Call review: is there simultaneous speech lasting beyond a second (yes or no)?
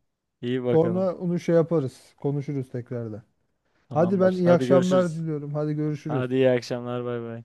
yes